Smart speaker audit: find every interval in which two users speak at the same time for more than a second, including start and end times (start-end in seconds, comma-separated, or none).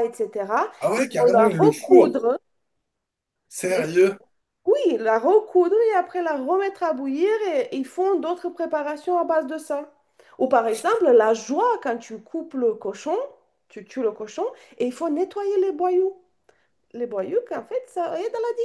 0.8-2.2